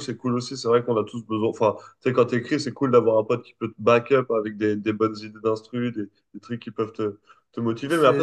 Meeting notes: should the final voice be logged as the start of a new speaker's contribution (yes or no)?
no